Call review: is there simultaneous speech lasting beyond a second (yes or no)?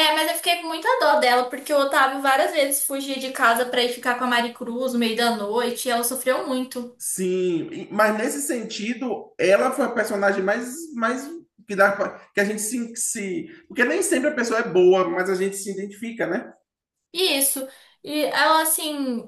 no